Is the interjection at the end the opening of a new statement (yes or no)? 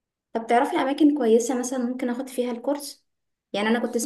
no